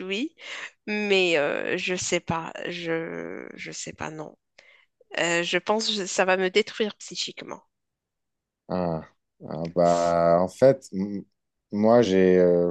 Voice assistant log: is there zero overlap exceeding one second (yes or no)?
yes